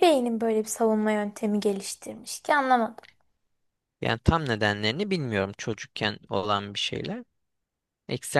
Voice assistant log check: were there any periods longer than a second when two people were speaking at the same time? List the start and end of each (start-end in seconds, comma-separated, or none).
none